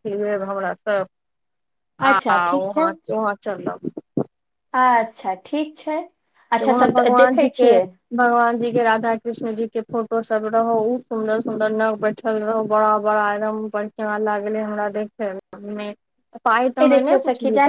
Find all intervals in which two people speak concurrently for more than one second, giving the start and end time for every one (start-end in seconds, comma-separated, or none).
none